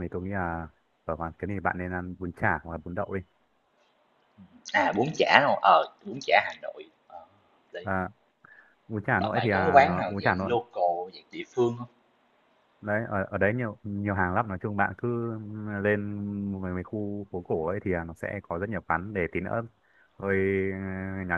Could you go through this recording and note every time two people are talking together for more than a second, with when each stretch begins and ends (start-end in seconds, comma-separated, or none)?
9.2-10.5